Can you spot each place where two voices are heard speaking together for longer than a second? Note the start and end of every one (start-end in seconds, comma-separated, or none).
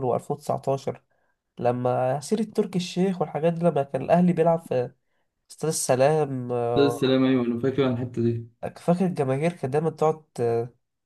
none